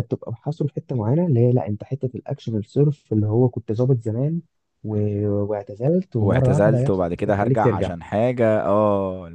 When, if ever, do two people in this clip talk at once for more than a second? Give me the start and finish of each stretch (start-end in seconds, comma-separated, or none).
6.2-7.9